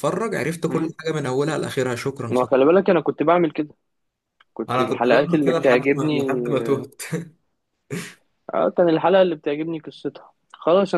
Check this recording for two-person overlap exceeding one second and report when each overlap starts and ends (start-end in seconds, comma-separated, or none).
4.7-6.2